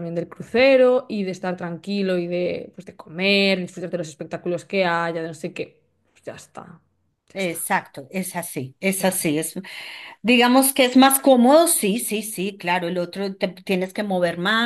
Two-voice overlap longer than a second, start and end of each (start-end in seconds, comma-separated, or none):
none